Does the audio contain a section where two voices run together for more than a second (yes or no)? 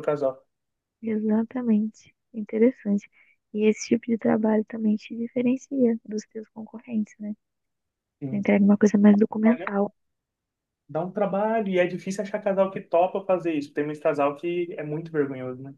no